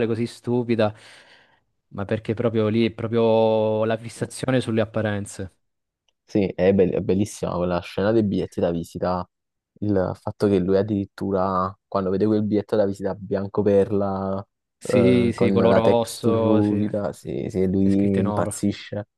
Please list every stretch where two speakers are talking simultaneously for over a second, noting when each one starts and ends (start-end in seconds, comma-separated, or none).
14.8-18.5